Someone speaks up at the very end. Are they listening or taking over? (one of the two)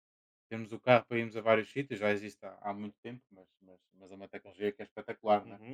taking over